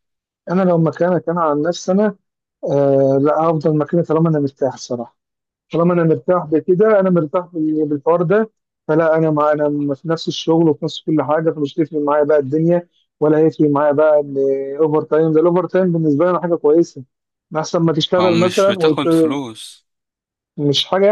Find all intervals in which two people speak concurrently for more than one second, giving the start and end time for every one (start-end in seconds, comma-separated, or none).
18.2-19.4